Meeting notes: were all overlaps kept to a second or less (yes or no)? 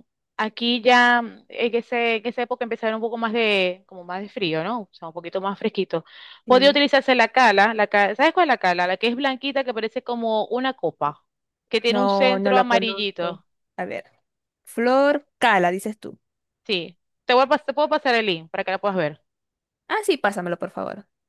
no